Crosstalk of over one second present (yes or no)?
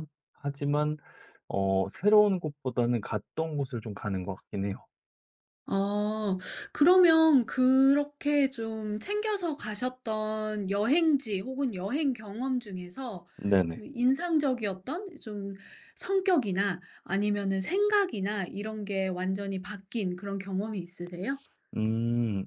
no